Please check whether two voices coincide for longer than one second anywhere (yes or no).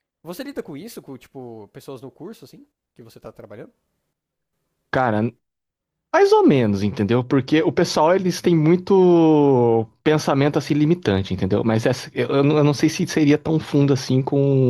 no